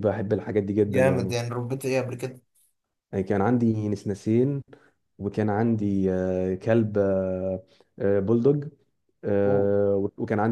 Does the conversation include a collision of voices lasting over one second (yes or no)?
no